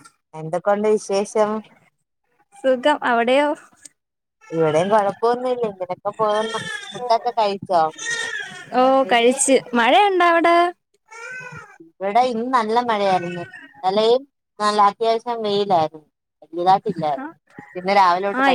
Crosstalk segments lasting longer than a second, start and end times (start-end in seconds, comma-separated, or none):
none